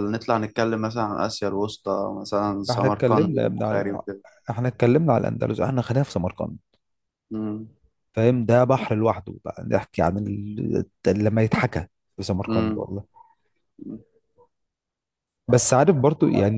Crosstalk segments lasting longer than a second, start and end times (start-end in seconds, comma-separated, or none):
2.7-4.0